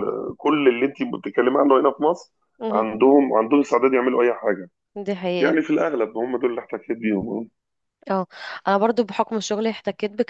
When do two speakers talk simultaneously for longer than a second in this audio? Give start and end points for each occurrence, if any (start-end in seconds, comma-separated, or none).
none